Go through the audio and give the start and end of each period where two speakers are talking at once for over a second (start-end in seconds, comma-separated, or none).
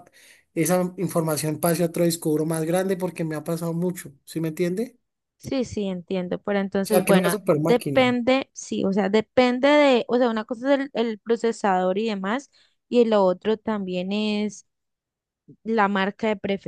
6.8-8.2